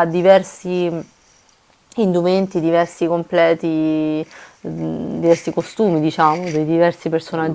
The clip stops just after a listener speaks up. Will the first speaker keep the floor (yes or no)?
no